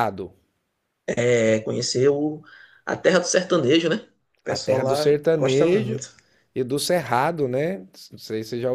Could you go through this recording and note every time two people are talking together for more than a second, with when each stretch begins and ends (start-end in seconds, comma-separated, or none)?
4.5-6.0